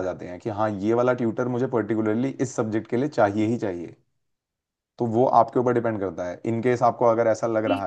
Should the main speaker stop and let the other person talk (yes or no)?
yes